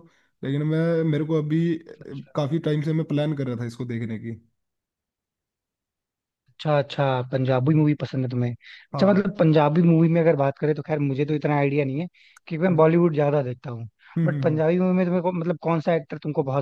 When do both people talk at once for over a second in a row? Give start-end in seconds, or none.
none